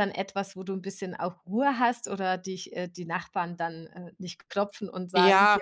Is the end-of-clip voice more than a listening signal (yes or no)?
yes